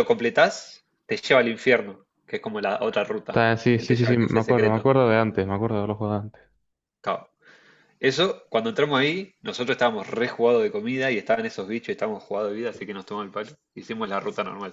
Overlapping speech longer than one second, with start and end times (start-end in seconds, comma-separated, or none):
3.3-4.9